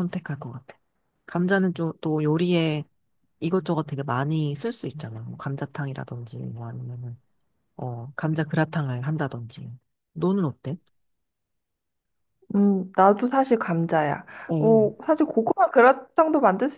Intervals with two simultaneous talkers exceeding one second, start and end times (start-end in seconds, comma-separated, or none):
none